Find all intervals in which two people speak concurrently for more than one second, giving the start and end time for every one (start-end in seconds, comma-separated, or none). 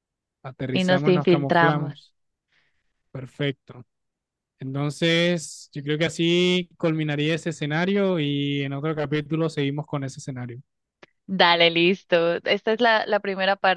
0.7-1.9